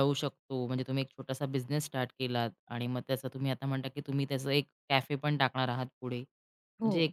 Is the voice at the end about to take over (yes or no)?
no